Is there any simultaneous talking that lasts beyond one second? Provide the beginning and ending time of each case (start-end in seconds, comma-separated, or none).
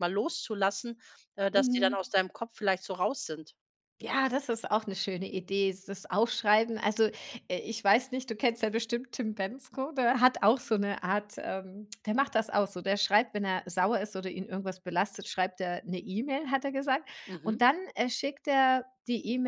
none